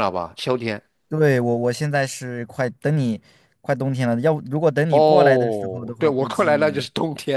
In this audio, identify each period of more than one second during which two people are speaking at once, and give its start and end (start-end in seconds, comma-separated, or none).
4.9-6.9